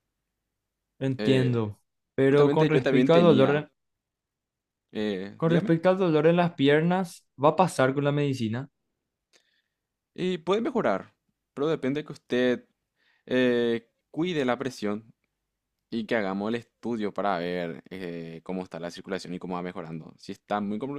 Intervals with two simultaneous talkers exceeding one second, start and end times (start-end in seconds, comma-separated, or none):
2.2-3.6